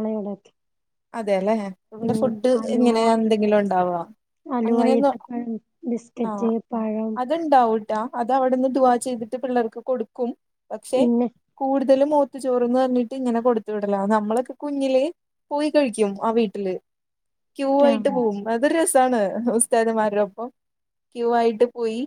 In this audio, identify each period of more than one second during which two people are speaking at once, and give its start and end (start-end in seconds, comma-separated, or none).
none